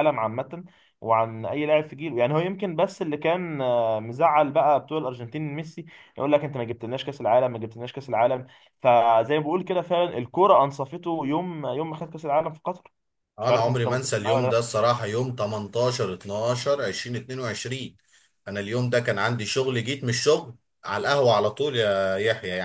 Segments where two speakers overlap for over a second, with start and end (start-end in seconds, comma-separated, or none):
13.4-14.6